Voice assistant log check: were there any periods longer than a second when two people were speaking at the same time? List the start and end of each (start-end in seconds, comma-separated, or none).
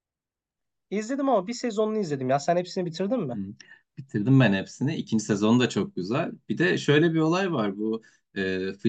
none